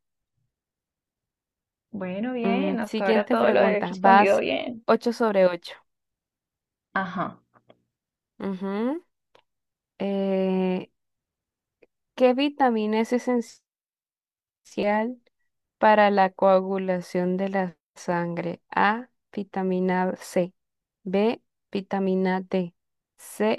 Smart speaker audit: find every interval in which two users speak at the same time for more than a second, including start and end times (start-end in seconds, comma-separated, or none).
2.4-4.4